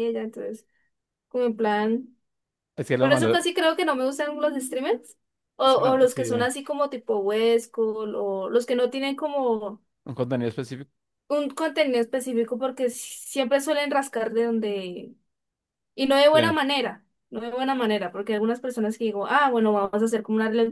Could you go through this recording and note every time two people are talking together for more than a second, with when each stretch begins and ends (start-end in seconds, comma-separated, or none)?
none